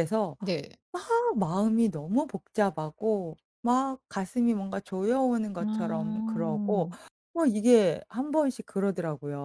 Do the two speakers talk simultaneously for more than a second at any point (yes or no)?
yes